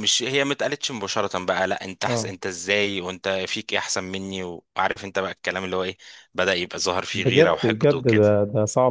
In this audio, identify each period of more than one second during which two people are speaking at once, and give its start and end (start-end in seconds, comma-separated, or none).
7.1-8.4